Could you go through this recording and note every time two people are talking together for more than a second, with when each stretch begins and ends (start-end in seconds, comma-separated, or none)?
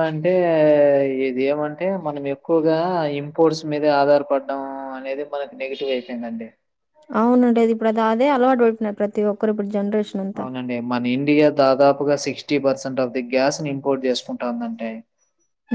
none